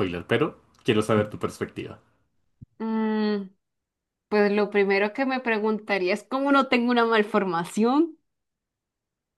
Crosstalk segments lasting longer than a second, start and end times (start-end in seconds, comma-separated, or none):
none